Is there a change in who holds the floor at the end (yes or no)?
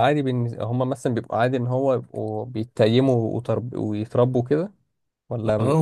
yes